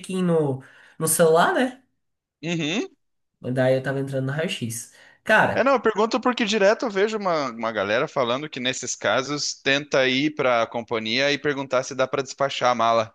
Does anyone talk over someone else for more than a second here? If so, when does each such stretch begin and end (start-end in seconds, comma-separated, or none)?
none